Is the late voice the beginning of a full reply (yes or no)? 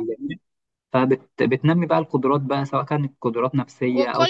yes